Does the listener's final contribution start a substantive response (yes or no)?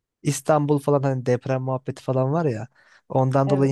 no